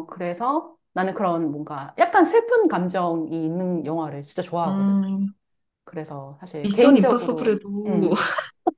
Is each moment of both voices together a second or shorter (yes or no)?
no